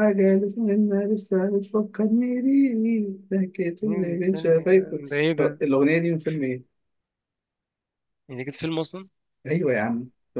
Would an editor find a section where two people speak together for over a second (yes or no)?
yes